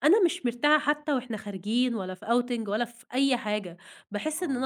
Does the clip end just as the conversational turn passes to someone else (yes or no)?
no